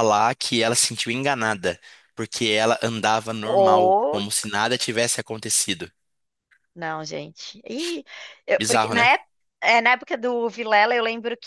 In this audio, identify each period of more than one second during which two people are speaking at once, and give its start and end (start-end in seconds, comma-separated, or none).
none